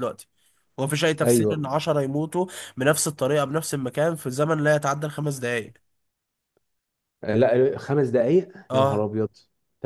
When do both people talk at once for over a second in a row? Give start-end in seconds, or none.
none